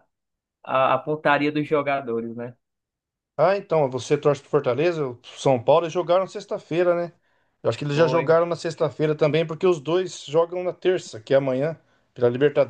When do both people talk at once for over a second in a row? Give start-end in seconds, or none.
none